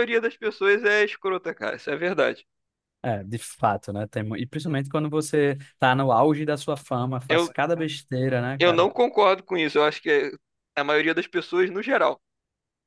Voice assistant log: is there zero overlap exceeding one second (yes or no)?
yes